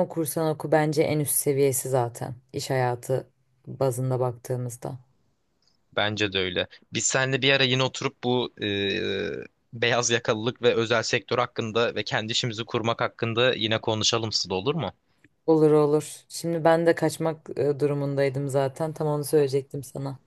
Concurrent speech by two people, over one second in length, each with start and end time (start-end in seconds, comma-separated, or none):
none